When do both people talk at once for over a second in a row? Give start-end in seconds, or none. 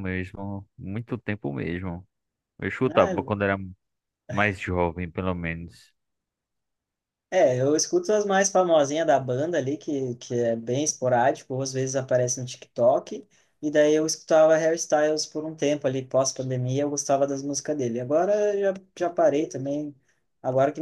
none